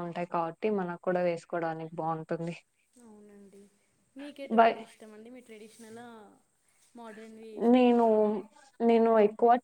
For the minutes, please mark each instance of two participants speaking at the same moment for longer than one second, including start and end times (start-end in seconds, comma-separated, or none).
none